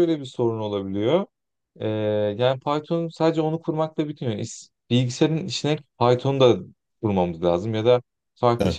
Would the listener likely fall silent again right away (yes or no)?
yes